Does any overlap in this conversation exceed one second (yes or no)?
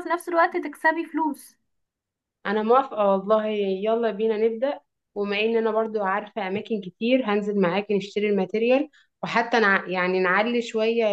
no